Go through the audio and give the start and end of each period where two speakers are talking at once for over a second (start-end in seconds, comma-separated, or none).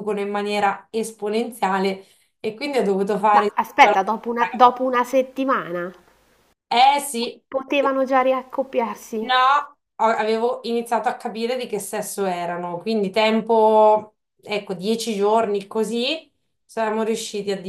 3.4-5.0